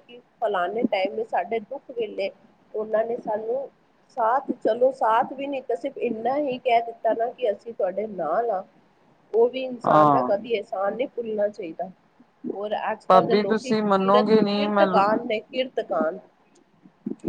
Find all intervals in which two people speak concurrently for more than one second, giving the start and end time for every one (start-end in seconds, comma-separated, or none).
13.1-14.9